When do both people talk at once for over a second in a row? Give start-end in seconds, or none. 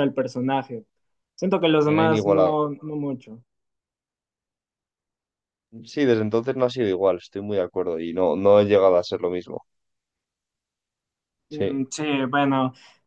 none